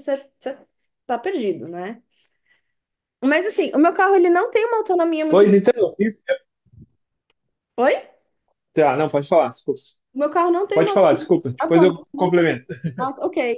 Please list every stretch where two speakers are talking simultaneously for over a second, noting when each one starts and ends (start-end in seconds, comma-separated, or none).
10.7-12.4